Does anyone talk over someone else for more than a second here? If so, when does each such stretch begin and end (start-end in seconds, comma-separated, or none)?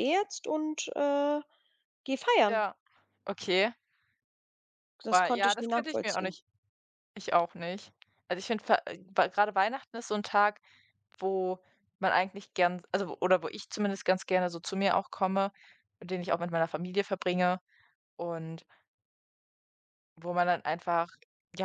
5.1-6.3